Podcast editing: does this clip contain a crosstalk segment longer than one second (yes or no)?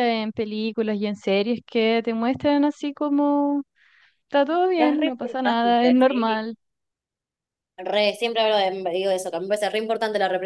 yes